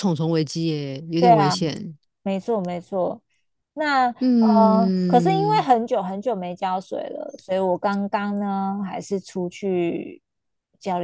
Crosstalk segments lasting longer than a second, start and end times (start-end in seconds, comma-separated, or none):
4.2-5.7